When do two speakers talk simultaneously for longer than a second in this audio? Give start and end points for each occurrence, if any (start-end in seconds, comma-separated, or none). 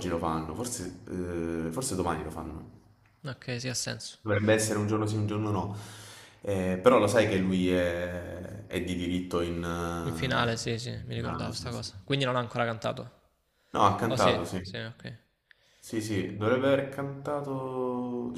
10.1-11.9